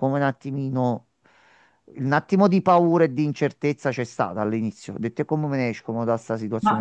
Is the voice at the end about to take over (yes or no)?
yes